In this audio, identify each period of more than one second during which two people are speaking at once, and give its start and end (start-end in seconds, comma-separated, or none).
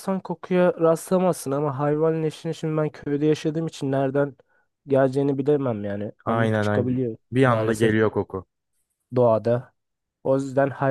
6.2-7.9